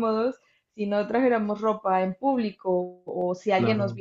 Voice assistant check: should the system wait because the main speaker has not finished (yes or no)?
yes